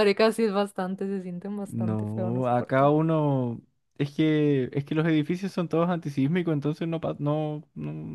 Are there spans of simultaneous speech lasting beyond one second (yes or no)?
yes